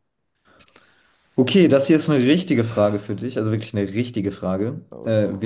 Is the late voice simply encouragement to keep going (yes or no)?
yes